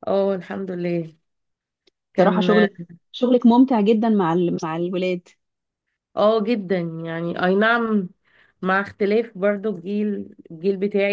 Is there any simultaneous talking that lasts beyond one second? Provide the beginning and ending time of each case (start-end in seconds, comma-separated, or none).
none